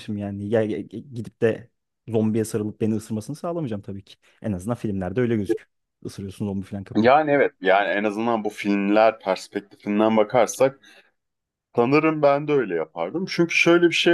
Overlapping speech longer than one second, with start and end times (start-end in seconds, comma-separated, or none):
none